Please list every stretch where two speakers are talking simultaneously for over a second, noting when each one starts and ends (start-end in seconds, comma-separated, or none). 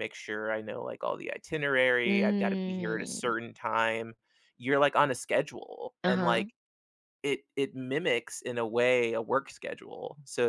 2.0-3.3